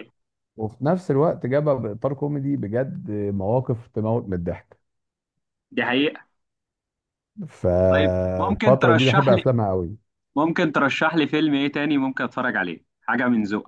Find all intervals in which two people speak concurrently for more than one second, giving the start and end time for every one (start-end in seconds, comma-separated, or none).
7.9-9.4